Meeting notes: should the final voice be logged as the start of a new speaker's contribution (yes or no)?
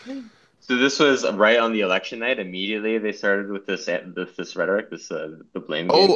yes